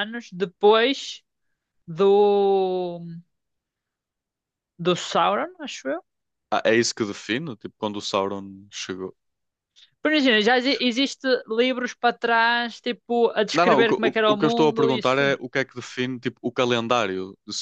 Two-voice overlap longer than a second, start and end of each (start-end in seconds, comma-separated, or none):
13.5-15.3